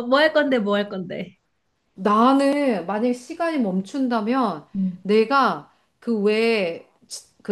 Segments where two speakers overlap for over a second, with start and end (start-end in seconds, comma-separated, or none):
none